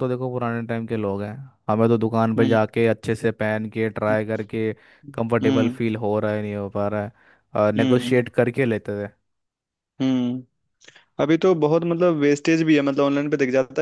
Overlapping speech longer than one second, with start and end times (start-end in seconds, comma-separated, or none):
none